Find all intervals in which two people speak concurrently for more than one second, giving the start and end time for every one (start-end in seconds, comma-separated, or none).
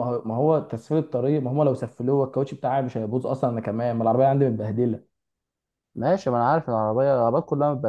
none